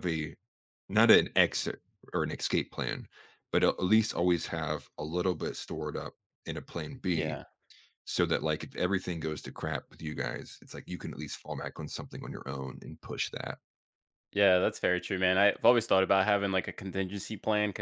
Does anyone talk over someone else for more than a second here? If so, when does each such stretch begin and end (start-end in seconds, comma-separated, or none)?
none